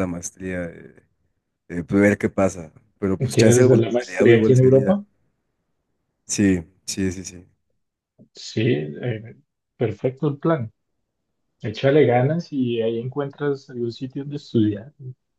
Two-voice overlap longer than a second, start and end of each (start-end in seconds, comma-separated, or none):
3.3-5.0